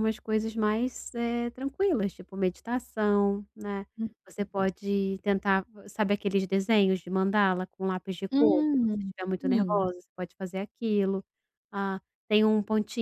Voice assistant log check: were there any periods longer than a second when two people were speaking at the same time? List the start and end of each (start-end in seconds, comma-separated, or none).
8.3-9.9